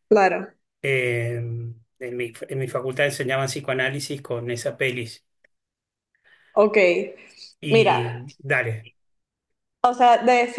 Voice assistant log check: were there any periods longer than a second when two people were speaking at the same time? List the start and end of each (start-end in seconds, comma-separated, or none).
none